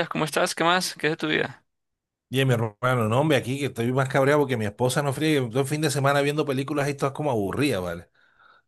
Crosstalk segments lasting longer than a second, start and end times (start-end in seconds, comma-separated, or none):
none